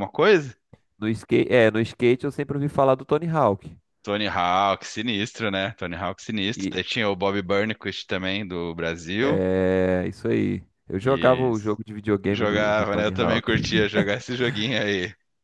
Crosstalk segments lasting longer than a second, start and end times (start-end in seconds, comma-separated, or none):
12.3-13.5